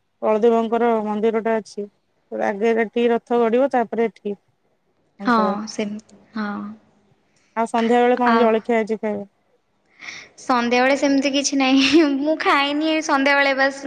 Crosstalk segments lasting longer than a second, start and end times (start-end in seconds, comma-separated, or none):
none